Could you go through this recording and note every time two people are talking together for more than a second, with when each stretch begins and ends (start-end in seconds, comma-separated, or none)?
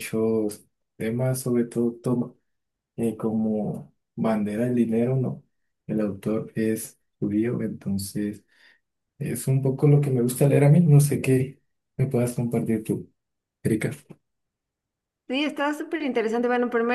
none